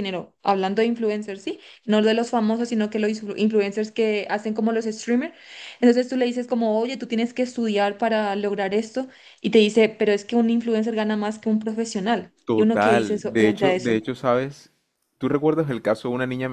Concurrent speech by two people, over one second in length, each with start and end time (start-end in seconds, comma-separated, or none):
12.4-14.0